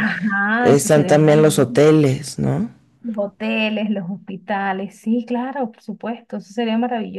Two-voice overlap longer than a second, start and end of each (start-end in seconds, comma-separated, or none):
0.6-1.9